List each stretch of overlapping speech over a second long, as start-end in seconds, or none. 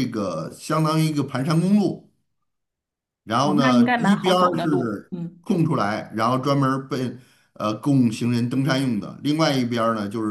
3.4-5.4